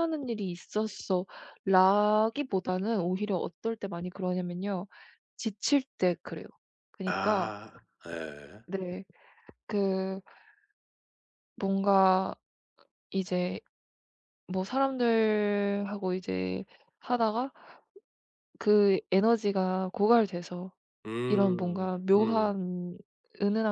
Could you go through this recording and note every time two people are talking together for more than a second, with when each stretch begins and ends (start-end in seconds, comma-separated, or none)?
21.3-22.5